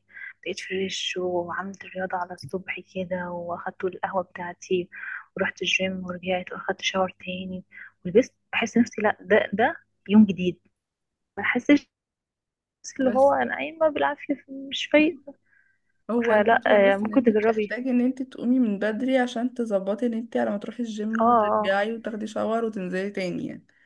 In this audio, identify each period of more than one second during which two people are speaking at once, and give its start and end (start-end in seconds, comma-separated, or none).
16.3-17.8